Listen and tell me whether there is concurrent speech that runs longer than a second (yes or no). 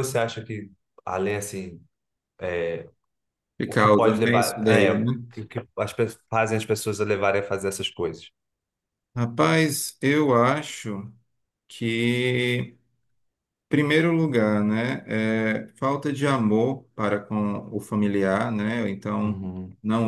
yes